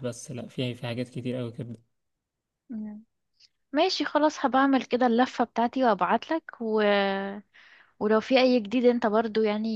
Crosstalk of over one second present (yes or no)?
no